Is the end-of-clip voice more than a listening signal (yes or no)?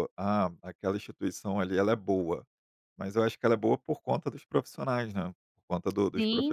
yes